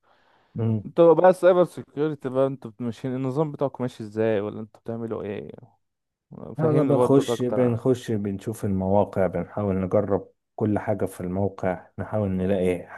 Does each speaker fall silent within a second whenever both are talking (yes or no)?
no